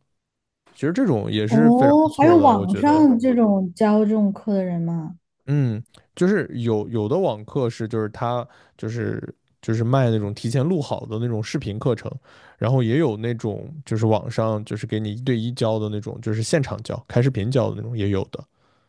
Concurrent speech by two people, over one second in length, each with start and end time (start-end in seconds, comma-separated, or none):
1.5-3.1